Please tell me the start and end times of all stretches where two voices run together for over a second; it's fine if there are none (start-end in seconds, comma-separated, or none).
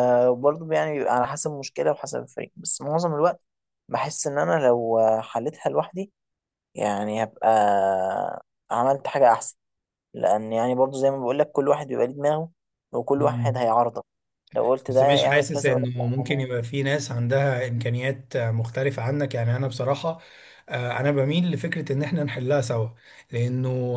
14.9-16.5